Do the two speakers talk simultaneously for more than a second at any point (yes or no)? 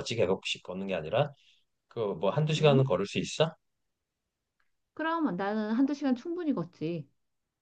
no